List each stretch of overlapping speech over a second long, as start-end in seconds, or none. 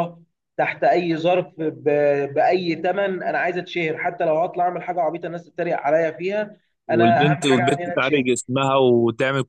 6.9-8.3